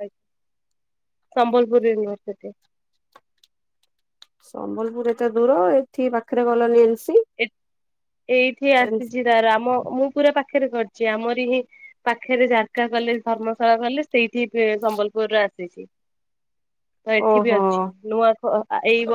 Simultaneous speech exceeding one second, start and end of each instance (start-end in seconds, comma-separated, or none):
none